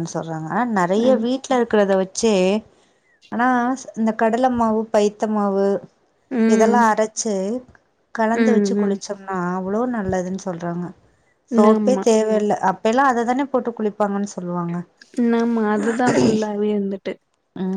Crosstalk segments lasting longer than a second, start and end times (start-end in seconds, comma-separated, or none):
none